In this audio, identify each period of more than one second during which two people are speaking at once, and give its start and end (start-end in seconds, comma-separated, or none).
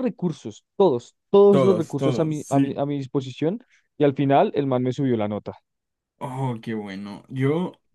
1.5-2.8